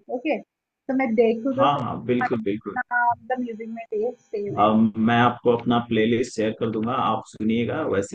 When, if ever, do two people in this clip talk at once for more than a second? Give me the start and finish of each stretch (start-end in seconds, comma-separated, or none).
none